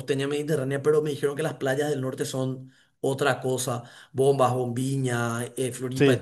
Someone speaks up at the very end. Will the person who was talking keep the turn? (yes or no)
yes